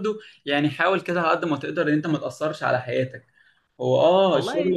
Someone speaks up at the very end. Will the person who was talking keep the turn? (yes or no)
yes